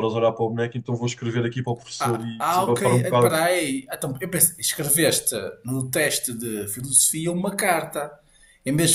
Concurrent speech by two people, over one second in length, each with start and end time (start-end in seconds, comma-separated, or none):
2.0-3.3